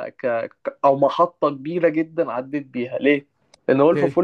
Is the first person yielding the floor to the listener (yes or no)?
no